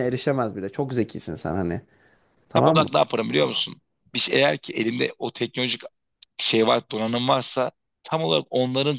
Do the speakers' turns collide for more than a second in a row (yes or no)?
no